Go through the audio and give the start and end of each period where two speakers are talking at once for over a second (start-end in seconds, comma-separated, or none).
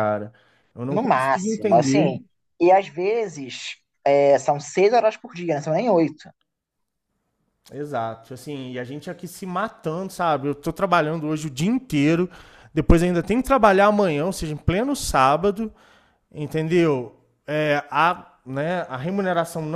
0.9-2.2